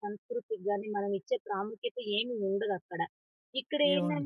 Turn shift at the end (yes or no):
no